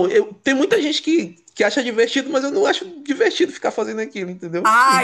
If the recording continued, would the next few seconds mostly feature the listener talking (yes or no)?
yes